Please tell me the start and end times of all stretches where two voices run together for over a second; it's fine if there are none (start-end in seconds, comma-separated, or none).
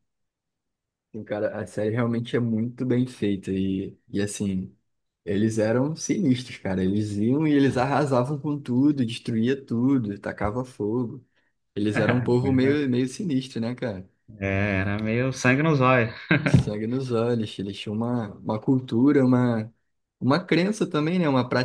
none